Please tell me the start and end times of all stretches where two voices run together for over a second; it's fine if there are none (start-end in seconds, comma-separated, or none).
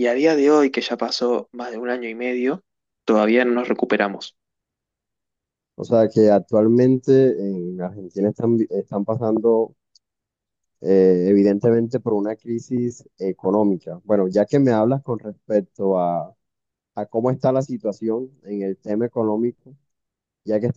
none